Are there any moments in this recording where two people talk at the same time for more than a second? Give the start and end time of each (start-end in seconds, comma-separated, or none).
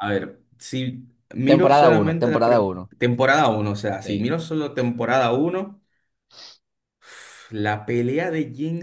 1.5-2.9